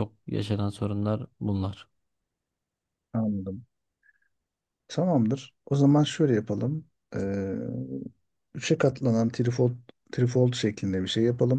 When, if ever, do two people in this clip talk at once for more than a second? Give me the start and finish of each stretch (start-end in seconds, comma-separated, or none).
none